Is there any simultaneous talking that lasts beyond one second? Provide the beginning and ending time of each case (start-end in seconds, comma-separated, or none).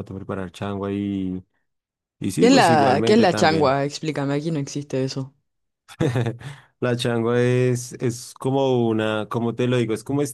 2.4-3.8